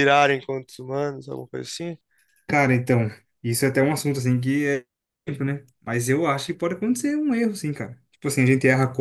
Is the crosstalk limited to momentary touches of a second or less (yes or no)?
yes